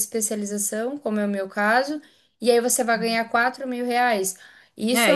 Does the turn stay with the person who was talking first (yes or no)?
no